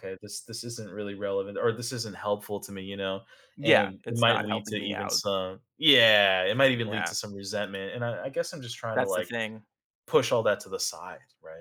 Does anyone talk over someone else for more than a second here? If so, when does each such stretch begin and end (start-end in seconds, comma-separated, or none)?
3.6-5.2